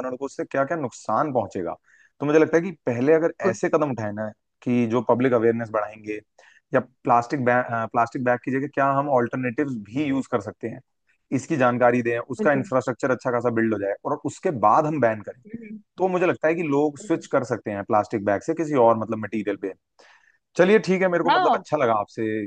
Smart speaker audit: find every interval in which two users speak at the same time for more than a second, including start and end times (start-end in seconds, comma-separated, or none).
none